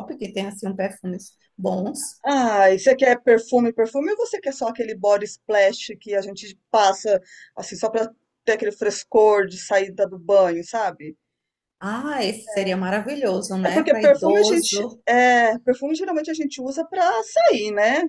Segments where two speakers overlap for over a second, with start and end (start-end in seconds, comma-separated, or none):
13.6-15.0